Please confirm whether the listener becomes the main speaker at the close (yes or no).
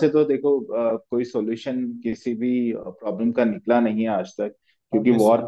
no